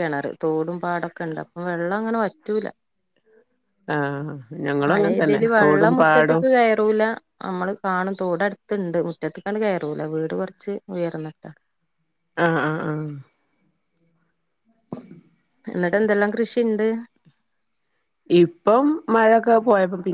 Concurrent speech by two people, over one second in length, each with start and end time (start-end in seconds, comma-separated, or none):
4.9-6.4